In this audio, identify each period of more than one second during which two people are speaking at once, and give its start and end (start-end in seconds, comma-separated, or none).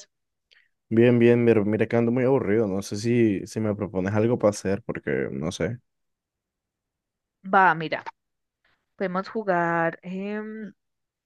none